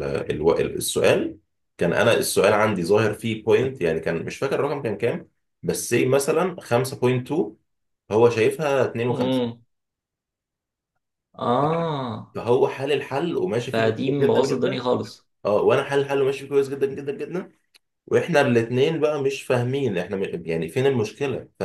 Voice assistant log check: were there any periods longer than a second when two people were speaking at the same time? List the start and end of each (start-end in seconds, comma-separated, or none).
13.6-14.8